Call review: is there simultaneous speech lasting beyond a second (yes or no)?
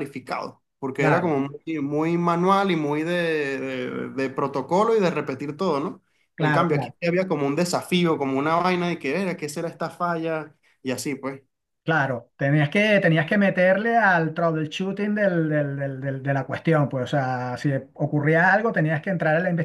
no